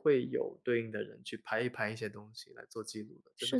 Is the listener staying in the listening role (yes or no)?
no